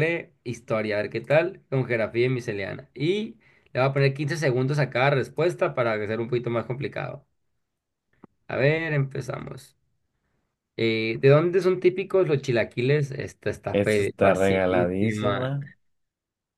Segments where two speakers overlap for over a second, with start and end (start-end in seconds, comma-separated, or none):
13.7-15.6